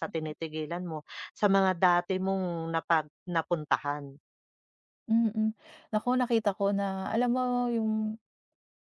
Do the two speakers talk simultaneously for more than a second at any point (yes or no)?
no